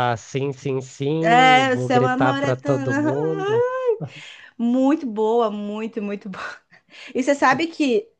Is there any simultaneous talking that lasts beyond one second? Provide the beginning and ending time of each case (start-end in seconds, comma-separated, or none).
1.2-2.8